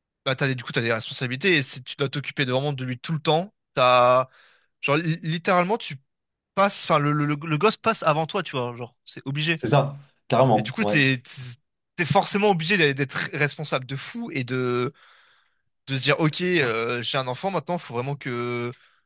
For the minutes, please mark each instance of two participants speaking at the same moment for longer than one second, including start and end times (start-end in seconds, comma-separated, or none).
none